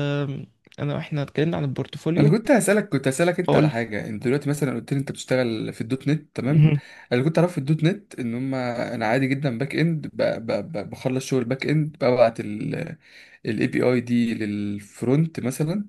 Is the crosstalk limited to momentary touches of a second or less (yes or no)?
yes